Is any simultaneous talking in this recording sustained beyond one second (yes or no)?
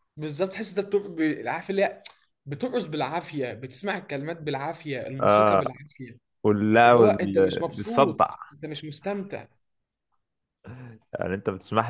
yes